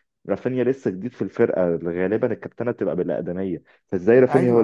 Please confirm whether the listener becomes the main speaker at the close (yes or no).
no